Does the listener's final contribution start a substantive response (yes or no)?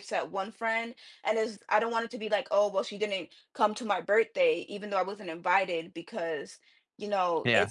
no